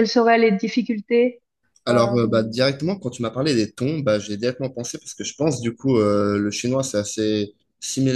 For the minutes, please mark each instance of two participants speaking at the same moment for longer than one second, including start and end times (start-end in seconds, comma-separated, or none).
none